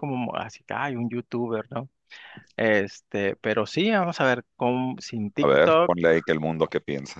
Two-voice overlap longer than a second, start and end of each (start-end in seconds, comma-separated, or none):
none